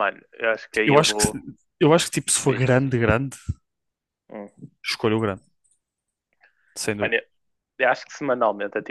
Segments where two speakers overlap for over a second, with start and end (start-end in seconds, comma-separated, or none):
none